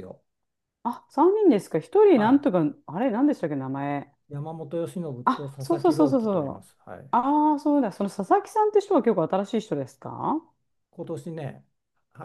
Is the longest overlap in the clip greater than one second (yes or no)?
yes